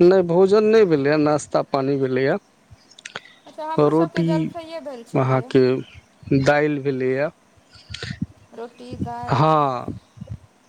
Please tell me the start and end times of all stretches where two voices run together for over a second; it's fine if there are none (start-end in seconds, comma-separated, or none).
none